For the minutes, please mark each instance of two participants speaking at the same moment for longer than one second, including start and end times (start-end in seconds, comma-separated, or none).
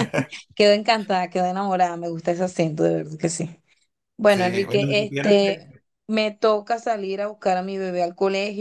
4.2-5.7